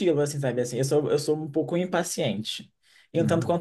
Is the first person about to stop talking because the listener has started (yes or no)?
no